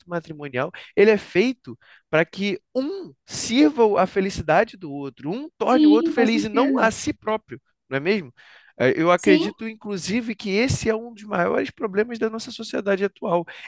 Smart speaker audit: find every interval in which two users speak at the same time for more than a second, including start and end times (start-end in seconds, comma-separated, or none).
5.7-6.9